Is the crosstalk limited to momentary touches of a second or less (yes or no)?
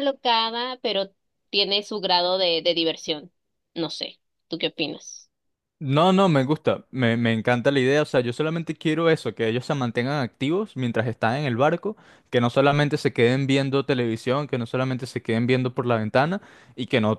yes